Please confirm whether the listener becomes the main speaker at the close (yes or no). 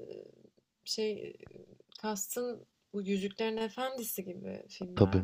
yes